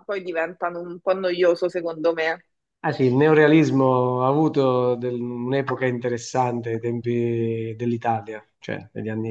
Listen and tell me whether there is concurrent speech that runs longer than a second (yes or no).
no